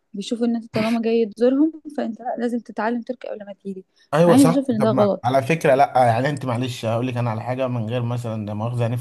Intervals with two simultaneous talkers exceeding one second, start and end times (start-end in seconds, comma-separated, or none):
4.3-5.8